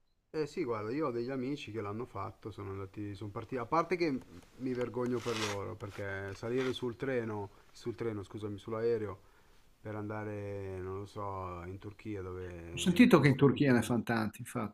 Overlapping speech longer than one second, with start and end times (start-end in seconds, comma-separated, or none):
12.7-13.9